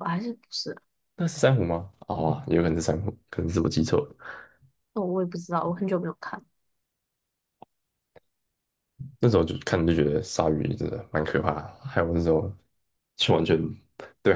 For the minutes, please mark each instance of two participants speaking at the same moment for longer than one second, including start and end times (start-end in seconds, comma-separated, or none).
none